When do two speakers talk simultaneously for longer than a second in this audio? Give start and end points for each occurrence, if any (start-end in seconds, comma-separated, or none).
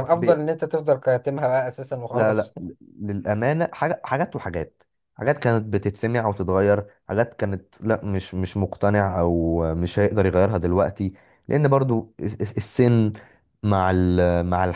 none